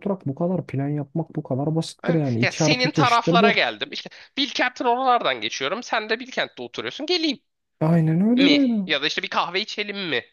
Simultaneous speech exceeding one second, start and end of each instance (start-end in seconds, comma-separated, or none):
2.0-3.6